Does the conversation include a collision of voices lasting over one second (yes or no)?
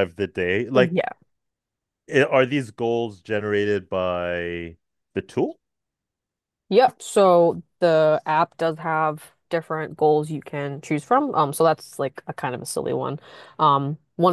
no